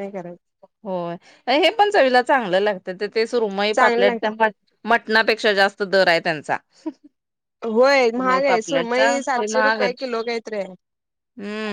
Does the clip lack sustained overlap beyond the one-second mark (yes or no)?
no